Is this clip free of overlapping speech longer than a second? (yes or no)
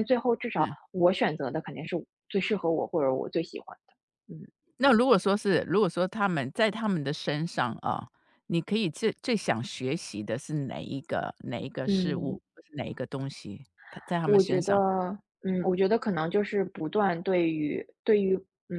yes